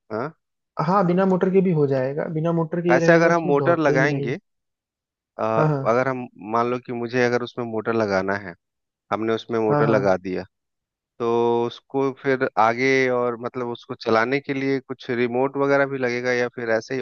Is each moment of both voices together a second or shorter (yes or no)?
no